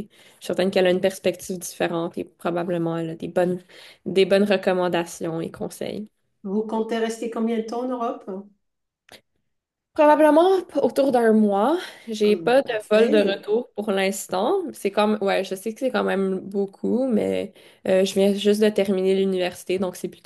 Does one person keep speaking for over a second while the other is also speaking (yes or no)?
yes